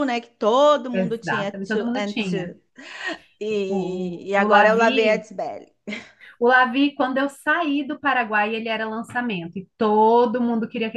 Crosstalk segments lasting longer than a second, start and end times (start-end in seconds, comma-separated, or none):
0.9-2.5, 3.7-5.3